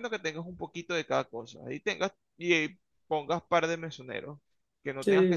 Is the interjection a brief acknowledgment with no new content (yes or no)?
yes